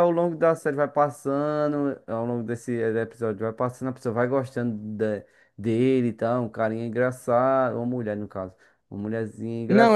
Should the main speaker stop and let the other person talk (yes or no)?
yes